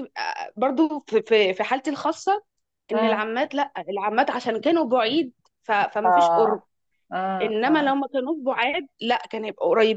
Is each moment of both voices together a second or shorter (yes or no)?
yes